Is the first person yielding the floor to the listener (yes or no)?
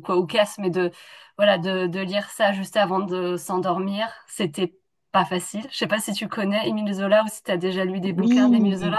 yes